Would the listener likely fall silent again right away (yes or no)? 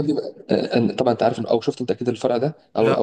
yes